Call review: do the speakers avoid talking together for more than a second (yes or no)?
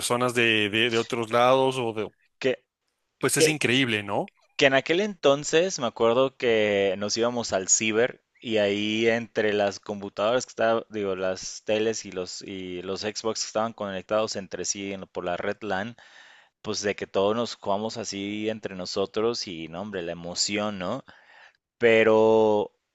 yes